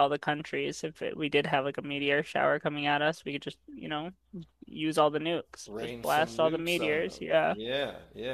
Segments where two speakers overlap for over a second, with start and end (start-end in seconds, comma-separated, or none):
5.7-7.5